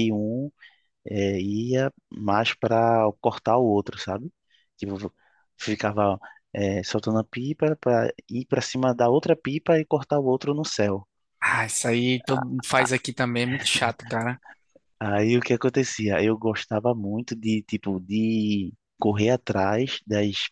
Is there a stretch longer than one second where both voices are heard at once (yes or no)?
no